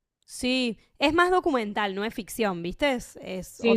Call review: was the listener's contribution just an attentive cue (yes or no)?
no